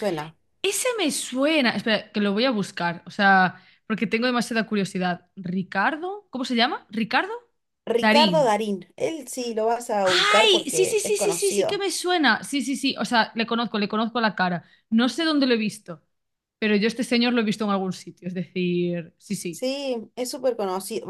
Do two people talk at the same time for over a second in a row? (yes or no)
yes